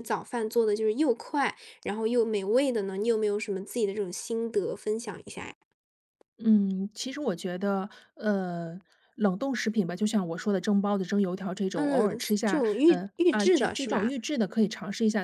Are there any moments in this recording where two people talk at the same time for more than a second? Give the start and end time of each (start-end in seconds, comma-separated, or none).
11.7-14.1